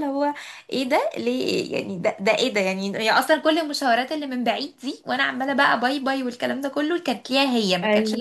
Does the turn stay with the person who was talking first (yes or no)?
yes